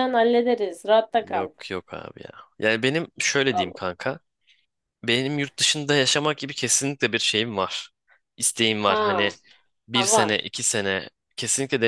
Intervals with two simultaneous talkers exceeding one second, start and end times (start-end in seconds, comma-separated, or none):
none